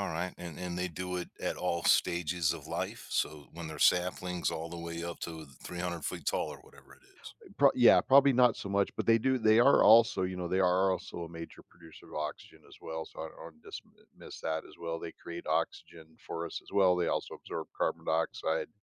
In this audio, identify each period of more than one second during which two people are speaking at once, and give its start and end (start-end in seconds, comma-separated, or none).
none